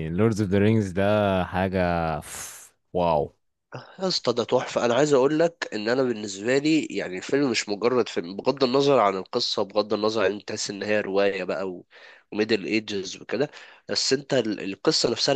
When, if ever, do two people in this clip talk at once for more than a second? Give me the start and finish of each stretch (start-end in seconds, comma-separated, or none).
none